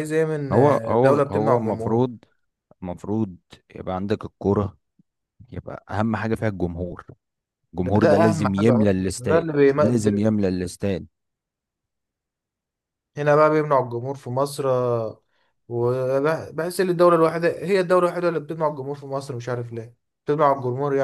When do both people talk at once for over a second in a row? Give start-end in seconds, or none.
0.5-2.1, 7.8-9.7